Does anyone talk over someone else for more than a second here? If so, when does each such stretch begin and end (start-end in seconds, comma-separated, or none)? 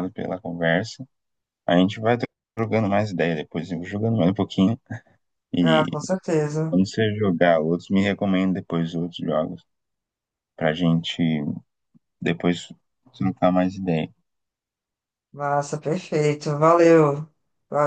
none